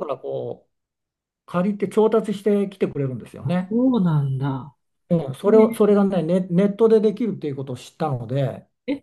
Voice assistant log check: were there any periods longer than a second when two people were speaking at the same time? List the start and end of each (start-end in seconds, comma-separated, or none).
none